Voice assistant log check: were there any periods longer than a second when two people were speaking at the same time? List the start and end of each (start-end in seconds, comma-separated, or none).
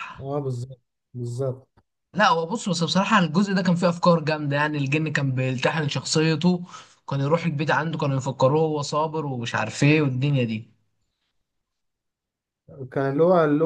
none